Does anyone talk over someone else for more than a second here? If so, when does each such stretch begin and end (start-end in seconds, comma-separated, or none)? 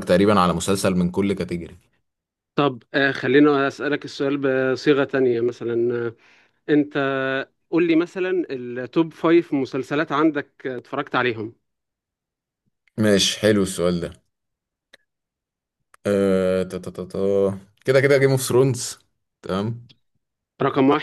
none